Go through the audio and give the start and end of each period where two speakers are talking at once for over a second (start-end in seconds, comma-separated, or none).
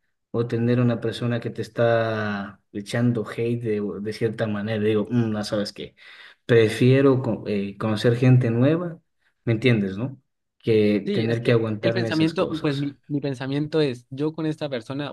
11.1-12.8